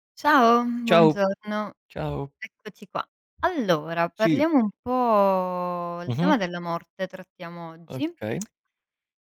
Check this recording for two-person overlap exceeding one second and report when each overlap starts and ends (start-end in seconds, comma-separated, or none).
none